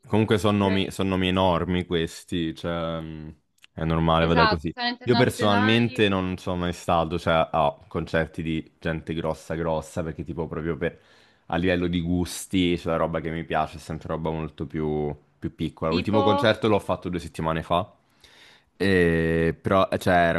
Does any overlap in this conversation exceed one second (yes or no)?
yes